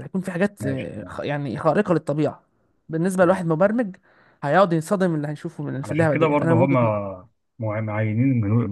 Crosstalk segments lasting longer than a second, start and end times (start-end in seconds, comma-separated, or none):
5.8-7.0